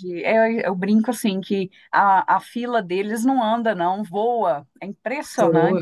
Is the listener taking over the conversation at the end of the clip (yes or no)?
yes